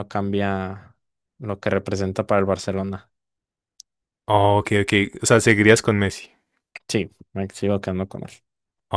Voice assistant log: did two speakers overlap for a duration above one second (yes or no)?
no